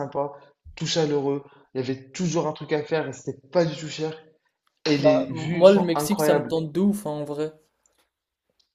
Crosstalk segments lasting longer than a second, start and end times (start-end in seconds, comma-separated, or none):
5.0-6.6